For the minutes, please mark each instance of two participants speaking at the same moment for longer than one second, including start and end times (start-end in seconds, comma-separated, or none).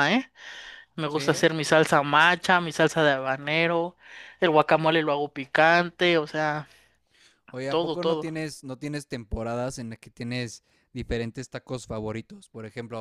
none